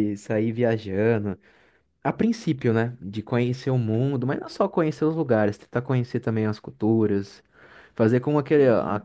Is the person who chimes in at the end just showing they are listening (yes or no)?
yes